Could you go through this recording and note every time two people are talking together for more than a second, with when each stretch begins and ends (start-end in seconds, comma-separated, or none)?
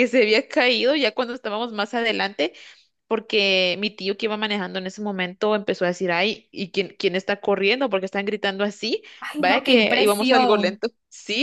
9.2-10.8